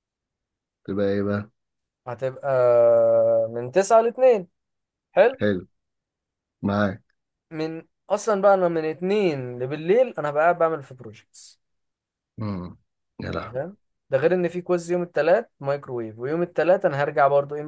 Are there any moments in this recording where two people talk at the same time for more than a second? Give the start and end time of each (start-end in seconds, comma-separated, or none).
none